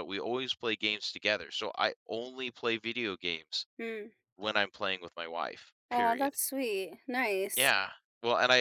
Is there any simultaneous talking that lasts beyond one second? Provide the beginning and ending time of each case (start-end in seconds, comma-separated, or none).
none